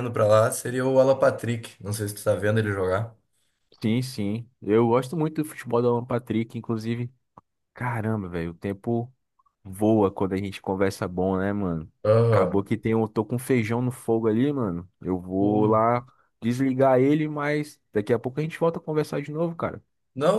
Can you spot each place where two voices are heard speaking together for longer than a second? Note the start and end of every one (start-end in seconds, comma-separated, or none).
none